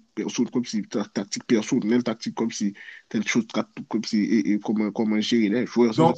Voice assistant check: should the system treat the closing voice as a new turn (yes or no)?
yes